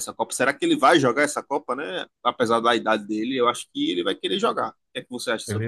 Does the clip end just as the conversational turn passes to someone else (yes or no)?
yes